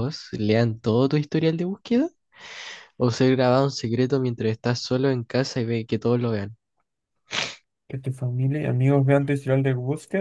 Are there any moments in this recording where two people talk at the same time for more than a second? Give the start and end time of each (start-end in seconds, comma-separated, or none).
none